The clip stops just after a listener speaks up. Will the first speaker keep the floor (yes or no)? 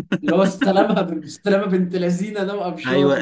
no